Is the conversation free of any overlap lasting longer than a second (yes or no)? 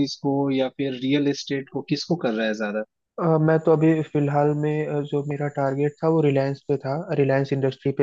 yes